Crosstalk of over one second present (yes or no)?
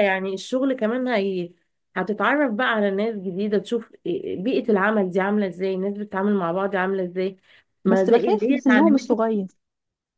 yes